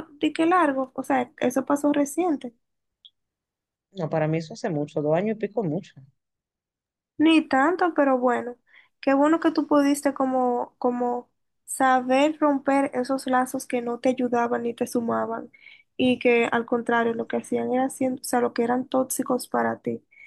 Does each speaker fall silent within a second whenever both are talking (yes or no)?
yes